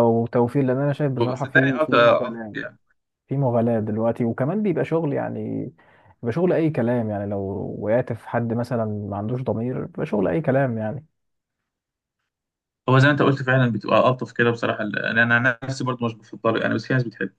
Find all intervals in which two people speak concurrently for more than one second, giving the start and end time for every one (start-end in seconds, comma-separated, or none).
1.3-2.6